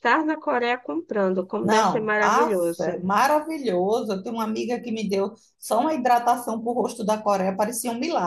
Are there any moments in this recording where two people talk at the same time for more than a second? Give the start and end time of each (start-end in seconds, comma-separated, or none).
1.6-3.1